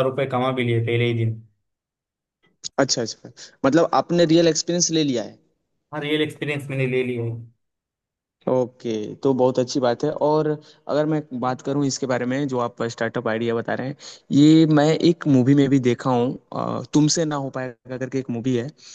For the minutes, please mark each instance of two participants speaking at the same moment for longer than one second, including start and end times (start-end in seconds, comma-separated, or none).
none